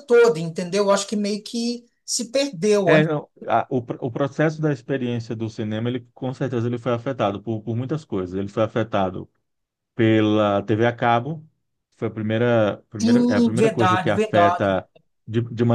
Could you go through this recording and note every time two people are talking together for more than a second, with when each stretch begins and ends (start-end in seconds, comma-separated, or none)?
13.0-14.7